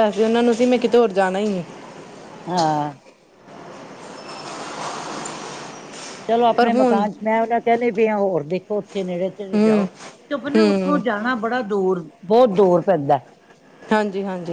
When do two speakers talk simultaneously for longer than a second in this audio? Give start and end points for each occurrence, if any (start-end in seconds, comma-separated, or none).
none